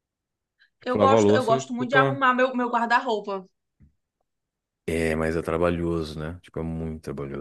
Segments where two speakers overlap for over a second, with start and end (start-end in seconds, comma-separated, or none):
0.8-2.2